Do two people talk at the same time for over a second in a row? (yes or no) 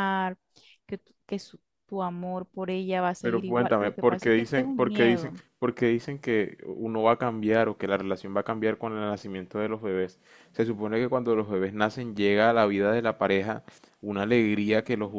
yes